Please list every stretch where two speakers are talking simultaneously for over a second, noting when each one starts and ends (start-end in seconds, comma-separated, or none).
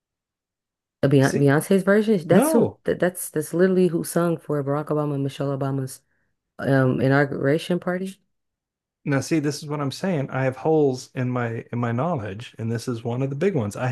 none